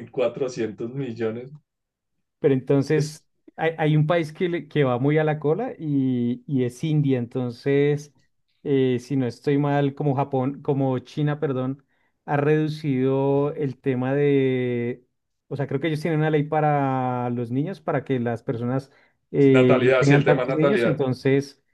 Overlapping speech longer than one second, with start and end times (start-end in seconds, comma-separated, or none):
19.5-21.0